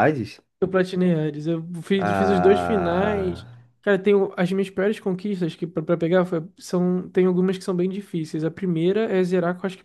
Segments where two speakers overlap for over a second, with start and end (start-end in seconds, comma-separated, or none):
2.0-3.5